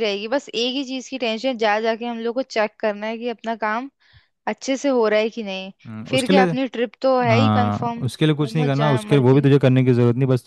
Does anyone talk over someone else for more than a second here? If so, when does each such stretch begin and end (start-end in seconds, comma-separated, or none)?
7.3-9.5